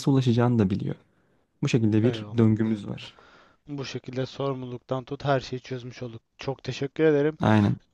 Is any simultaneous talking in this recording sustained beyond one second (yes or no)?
no